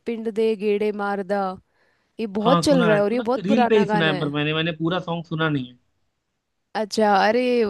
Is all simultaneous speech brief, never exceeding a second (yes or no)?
no